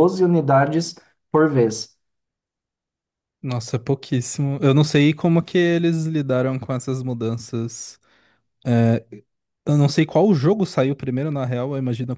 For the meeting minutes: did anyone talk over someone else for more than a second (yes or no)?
no